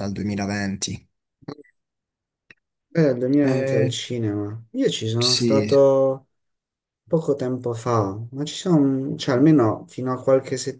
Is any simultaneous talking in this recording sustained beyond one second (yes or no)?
no